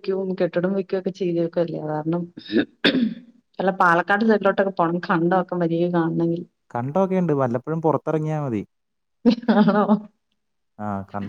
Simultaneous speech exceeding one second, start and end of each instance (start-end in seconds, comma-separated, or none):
none